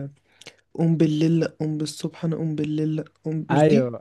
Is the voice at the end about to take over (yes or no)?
yes